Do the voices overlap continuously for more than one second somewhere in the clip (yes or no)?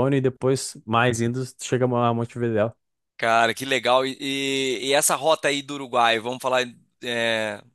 no